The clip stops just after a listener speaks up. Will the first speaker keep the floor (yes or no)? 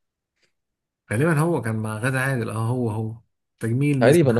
no